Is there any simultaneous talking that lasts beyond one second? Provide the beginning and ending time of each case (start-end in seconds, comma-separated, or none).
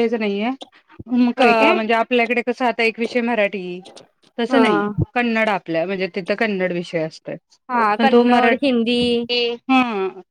8.0-9.2